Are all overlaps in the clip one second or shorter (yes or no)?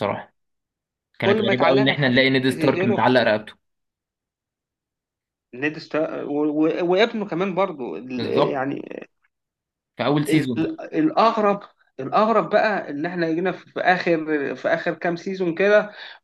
no